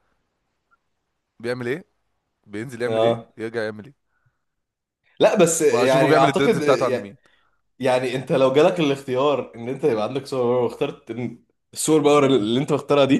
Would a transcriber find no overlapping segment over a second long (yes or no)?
no